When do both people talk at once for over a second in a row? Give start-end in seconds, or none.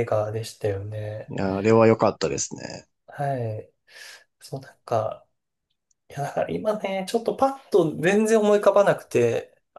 none